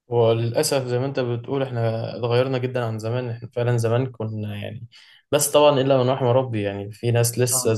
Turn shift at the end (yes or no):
no